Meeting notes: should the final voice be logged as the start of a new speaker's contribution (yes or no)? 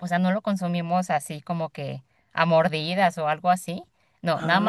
no